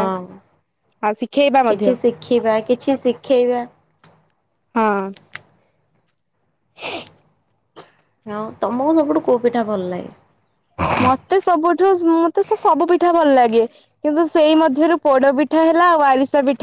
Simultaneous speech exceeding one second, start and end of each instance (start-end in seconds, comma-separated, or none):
none